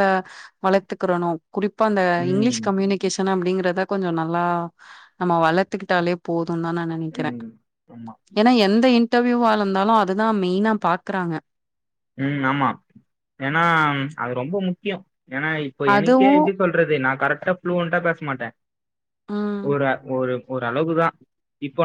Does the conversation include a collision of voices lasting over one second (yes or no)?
no